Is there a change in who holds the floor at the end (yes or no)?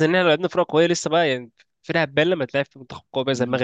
yes